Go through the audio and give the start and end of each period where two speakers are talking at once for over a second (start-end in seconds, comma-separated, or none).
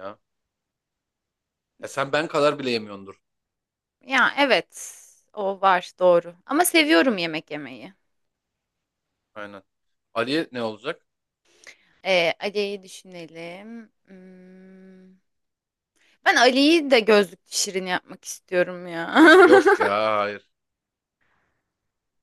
none